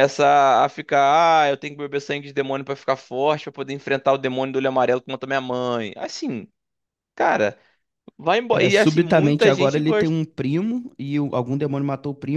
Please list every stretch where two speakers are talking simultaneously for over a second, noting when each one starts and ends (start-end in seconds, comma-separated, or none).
8.5-10.2